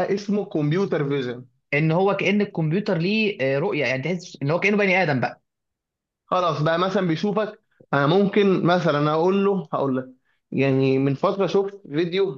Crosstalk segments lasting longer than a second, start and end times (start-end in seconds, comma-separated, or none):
none